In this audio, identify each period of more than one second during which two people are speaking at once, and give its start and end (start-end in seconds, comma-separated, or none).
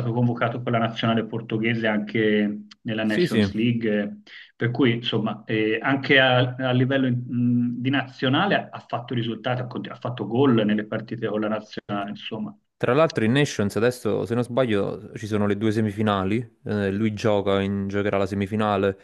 none